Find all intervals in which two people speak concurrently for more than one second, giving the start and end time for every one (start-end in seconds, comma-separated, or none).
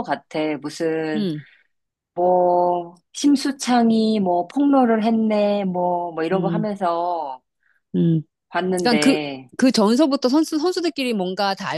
none